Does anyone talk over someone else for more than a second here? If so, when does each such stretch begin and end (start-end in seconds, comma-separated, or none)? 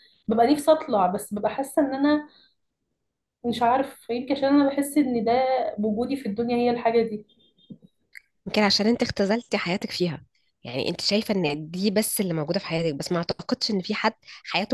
none